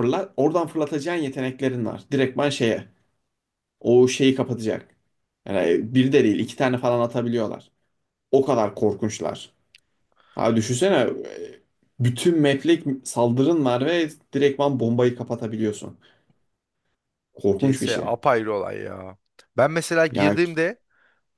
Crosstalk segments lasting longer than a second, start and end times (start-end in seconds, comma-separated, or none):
none